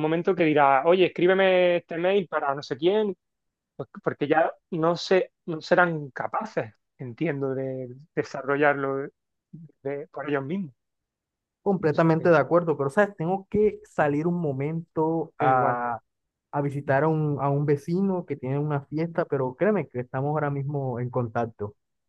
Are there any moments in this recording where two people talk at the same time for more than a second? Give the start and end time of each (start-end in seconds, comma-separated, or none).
none